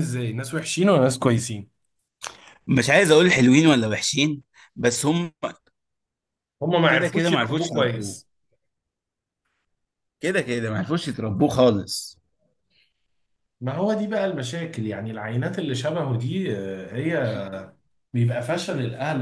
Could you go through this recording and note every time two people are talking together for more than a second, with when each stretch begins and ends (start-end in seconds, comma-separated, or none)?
6.9-8.2